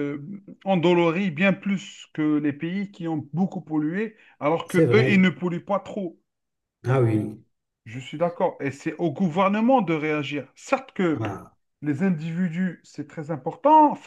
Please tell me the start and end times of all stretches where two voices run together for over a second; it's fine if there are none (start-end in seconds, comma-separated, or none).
none